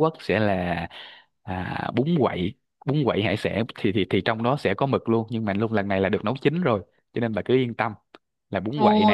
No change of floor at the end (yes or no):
no